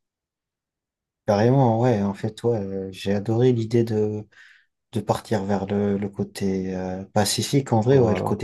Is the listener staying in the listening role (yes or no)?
yes